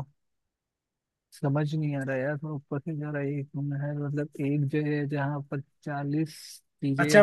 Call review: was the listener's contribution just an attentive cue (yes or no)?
no